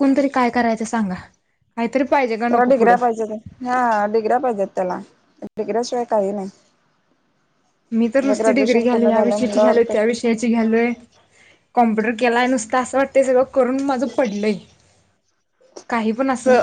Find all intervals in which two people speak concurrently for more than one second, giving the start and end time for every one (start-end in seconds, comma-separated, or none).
8.2-10.2